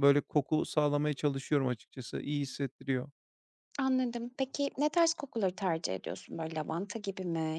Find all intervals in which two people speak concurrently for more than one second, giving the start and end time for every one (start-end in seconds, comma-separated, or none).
none